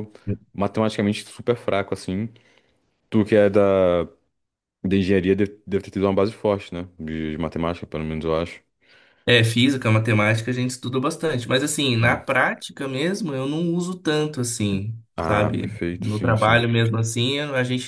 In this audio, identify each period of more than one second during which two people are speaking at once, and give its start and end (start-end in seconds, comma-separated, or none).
15.2-16.6